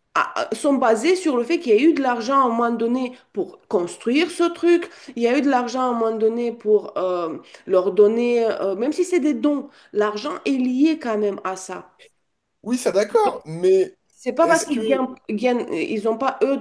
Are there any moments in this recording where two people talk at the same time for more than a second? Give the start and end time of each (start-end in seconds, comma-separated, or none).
none